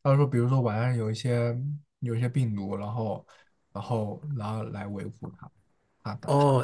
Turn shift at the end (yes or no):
yes